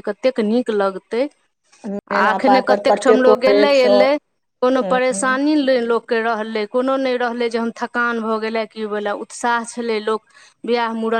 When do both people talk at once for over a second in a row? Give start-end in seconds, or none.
2.2-4.2